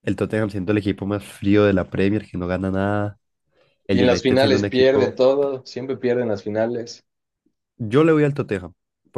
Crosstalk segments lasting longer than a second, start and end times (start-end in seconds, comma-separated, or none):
3.9-5.2